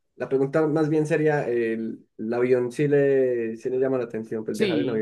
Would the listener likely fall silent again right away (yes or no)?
no